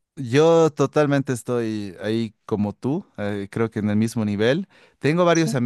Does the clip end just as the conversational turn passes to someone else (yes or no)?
no